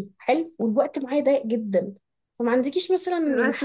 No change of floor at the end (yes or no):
yes